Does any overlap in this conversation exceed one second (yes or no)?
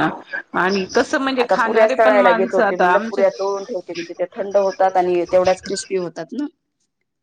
yes